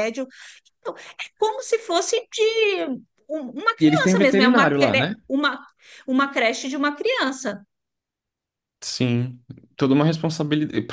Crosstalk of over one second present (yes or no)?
yes